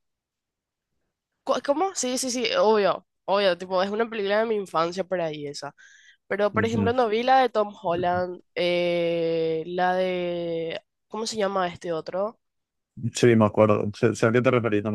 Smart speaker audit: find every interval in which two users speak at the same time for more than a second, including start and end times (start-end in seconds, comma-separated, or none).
none